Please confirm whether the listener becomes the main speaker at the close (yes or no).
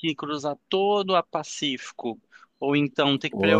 no